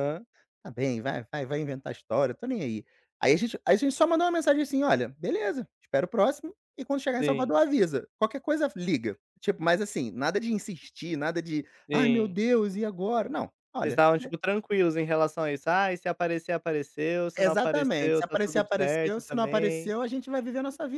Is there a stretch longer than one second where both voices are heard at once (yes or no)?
yes